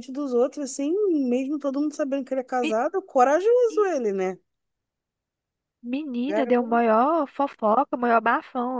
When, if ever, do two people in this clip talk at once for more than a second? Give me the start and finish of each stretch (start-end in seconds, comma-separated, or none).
none